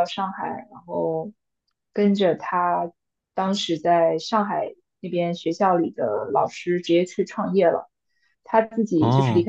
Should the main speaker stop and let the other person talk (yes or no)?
no